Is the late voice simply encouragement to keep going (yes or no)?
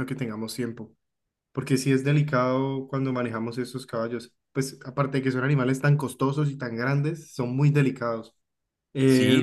no